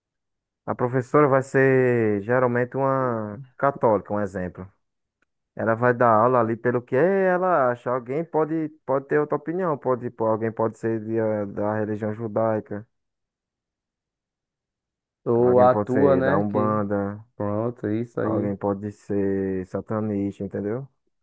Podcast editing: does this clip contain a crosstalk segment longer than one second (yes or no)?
yes